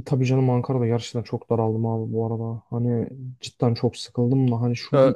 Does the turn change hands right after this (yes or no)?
no